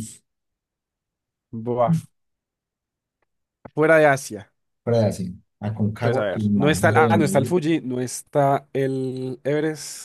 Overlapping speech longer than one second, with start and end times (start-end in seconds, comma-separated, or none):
6.0-7.6